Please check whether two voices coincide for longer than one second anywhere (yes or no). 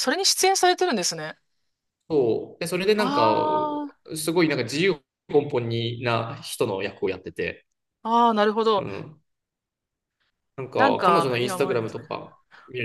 yes